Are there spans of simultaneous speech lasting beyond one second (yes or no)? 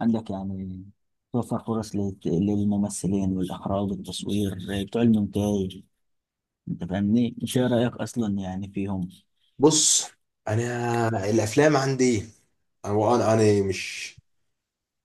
no